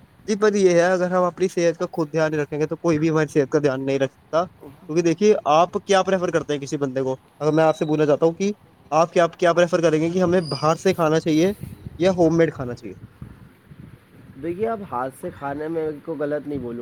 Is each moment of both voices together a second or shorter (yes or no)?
yes